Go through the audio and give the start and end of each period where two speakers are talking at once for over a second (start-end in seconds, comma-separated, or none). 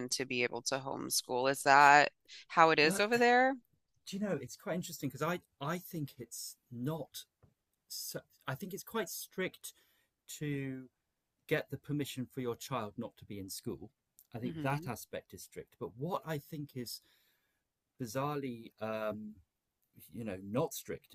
none